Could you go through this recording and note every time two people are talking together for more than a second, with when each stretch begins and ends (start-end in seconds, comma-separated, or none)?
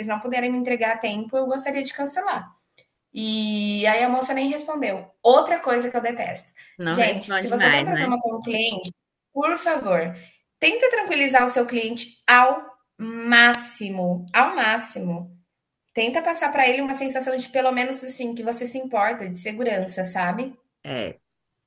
6.9-8.1